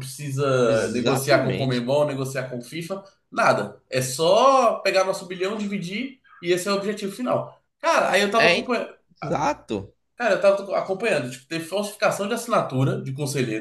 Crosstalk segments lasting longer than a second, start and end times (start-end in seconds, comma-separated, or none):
0.7-1.9